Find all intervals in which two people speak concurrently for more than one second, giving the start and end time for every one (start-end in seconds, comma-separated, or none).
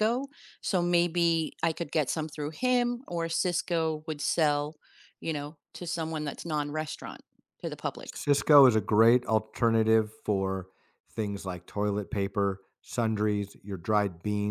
none